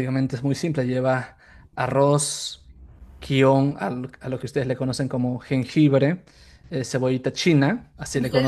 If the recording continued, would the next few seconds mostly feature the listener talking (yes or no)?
yes